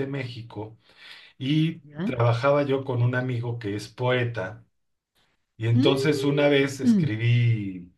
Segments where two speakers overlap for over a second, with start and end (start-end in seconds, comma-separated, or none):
5.7-7.1